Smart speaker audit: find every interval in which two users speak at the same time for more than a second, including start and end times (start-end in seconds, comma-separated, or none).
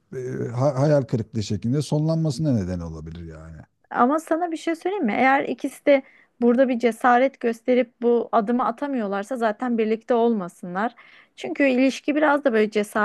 none